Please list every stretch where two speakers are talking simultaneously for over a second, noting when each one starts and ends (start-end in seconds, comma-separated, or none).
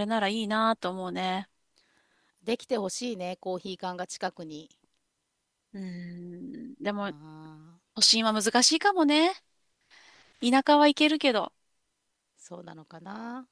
none